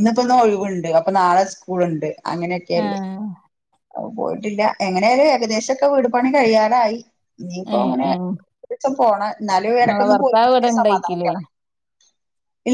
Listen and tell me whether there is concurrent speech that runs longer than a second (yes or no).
yes